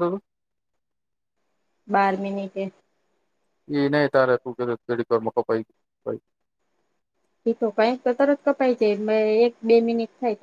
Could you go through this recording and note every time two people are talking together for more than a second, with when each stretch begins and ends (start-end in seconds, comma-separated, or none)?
none